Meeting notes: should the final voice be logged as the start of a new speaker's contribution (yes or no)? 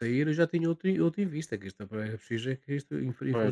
no